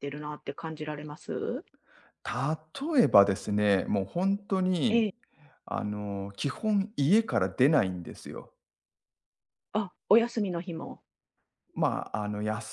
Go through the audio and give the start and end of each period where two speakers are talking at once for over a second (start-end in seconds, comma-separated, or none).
none